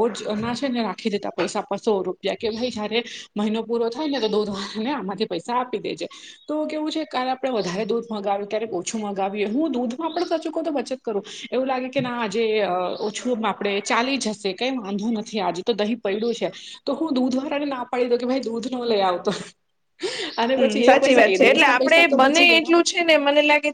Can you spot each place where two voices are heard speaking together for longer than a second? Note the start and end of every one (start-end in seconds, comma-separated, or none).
20.6-22.7